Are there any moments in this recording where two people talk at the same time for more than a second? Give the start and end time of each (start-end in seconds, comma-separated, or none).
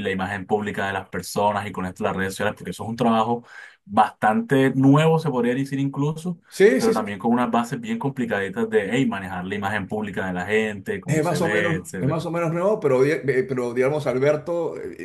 11.0-12.3